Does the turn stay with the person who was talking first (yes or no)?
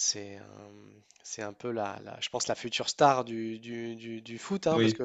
yes